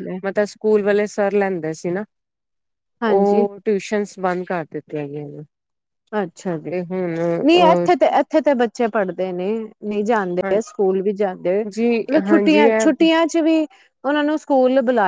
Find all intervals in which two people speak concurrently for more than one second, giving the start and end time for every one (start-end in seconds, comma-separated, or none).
11.5-13.0